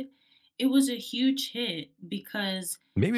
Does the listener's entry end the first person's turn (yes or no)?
yes